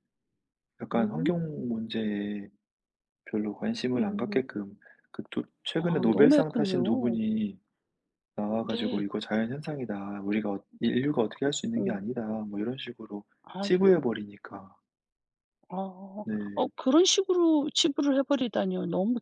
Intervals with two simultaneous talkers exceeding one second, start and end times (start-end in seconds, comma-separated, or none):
5.8-7.2